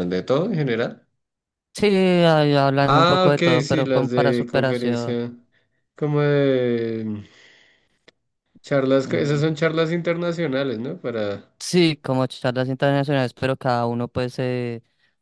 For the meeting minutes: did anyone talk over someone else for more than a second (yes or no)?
yes